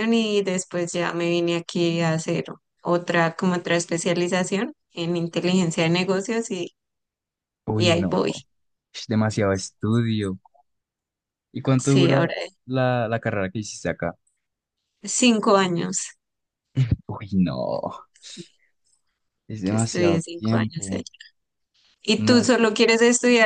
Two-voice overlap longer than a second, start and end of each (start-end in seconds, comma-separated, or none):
19.7-21.0